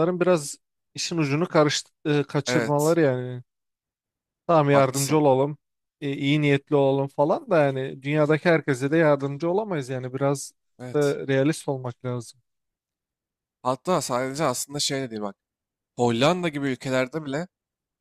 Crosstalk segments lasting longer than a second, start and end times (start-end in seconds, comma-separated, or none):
none